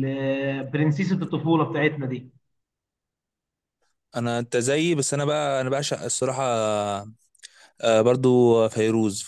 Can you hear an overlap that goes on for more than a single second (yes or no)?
no